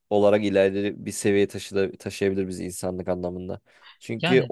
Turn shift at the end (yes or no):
no